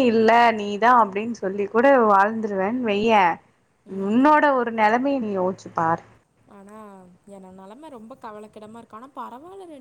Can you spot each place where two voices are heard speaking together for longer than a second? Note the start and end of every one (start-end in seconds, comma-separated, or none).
none